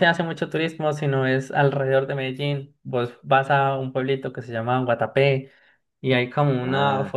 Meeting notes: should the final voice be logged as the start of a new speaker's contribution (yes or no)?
no